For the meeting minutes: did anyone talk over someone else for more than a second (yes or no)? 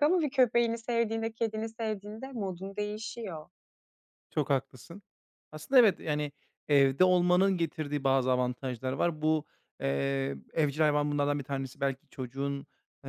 no